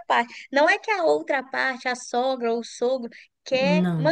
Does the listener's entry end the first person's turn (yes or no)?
no